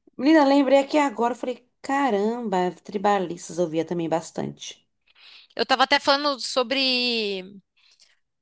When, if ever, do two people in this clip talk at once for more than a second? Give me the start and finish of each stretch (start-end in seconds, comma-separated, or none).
none